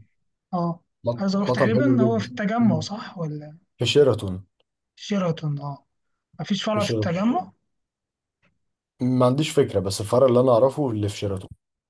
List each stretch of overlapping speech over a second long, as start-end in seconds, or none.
1.2-2.9